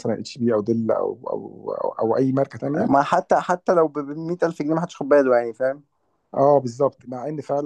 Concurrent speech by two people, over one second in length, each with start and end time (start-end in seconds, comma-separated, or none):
none